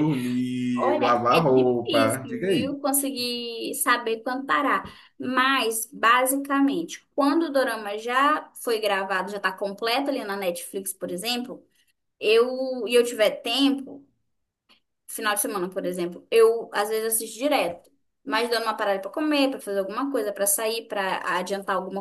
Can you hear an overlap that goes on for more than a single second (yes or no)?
yes